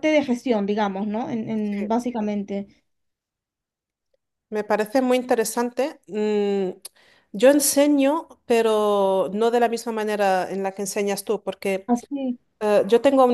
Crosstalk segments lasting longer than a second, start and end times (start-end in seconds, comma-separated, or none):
none